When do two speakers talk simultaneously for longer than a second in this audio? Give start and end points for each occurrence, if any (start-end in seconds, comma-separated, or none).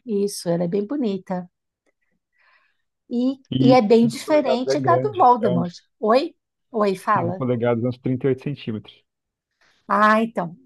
3.5-5.8